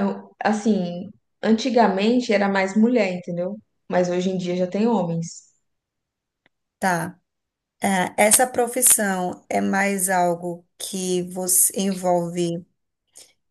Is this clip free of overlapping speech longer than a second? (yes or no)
yes